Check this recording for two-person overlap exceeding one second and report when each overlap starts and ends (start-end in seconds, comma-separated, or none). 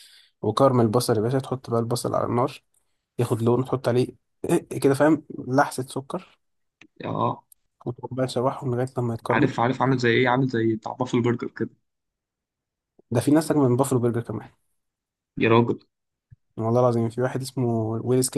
none